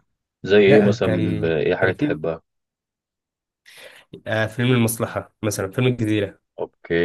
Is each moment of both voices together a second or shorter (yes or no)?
no